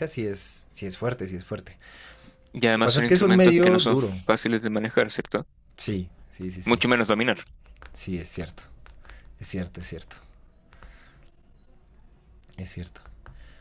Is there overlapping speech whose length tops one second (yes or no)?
yes